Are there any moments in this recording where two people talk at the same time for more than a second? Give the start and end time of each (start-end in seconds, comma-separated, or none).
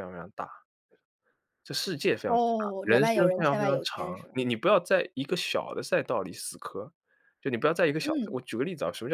2.8-4.3